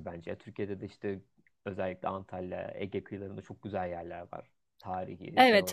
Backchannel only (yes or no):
no